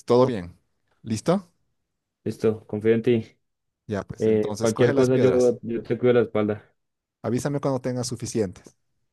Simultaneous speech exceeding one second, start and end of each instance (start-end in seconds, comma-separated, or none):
4.2-5.6